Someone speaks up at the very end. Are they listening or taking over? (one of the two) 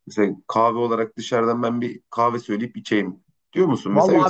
taking over